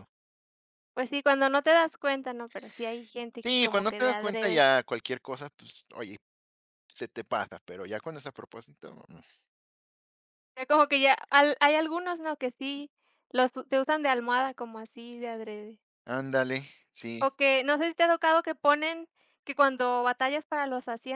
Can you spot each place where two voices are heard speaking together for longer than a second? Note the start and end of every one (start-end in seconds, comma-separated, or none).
3.4-4.6